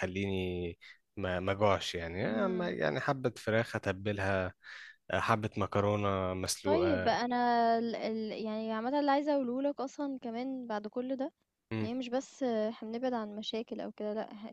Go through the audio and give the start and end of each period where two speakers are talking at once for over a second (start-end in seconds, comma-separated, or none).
none